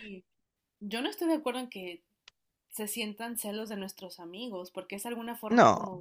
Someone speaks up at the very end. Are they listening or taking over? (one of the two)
listening